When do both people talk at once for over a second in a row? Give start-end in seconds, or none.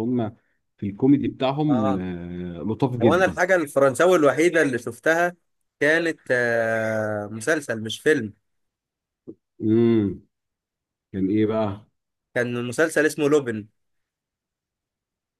none